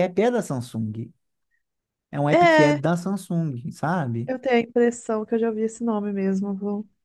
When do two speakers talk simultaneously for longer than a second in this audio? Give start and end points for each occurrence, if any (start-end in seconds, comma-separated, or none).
none